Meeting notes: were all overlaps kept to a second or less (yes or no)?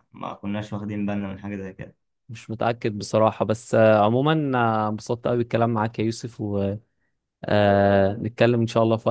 yes